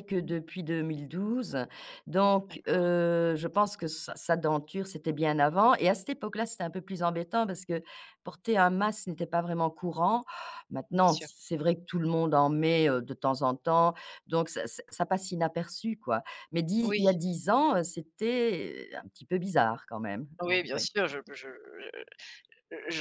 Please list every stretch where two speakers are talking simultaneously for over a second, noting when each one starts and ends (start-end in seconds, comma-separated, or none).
none